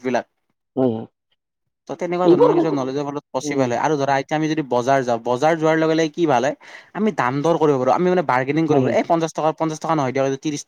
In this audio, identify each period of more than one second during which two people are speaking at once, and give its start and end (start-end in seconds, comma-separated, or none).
2.3-3.6